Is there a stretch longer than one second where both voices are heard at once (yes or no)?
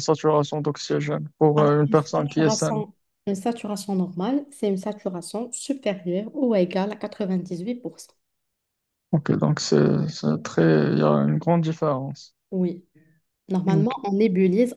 yes